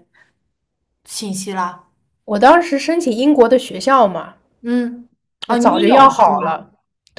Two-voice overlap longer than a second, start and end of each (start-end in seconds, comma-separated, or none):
5.5-6.7